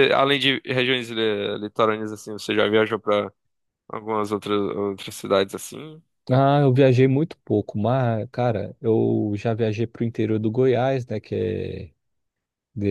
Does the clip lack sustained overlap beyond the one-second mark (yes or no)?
yes